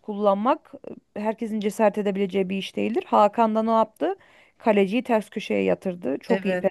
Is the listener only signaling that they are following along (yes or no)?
no